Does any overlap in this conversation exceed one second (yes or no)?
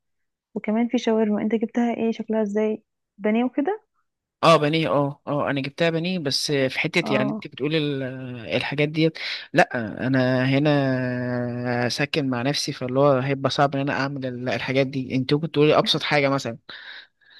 no